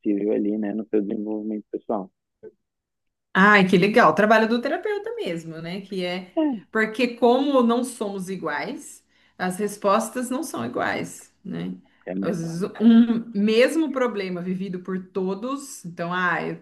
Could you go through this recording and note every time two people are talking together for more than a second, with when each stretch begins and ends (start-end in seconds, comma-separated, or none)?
none